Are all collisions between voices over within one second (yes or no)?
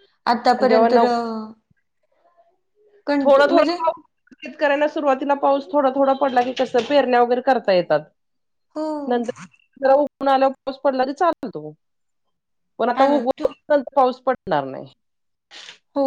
yes